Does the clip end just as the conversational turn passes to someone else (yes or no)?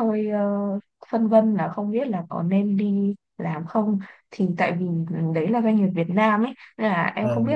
no